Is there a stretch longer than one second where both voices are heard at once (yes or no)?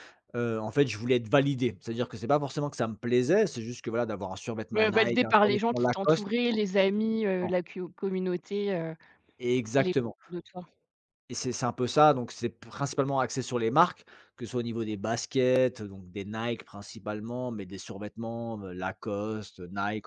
yes